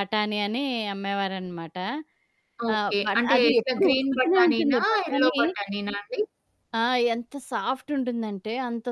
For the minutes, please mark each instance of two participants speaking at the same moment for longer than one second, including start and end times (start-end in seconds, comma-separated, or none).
2.7-5.3